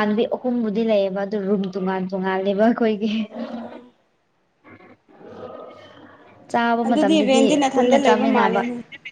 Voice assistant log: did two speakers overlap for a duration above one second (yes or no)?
yes